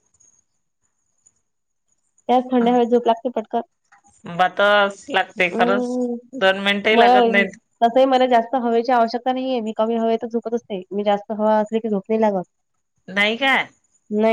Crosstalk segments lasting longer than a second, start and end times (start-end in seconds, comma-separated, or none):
none